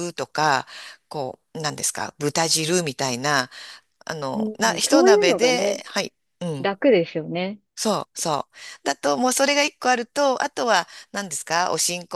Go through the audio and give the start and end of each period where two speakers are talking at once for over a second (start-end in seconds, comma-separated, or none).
4.3-5.8